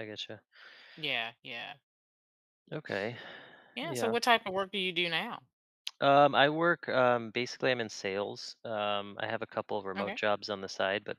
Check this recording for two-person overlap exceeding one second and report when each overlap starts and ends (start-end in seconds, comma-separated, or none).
none